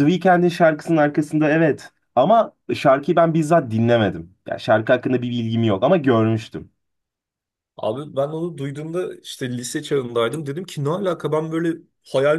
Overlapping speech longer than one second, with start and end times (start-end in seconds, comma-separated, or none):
none